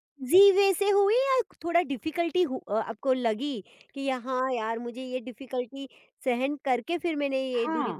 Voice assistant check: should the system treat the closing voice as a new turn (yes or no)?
yes